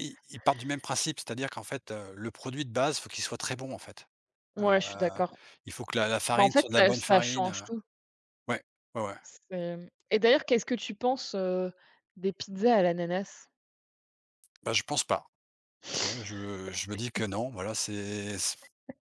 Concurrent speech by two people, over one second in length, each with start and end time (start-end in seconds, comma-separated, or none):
6.3-7.7